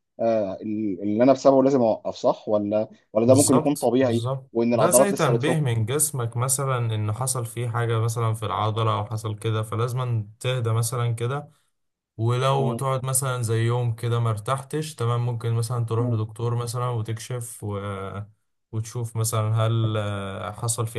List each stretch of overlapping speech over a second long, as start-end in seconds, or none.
3.2-5.7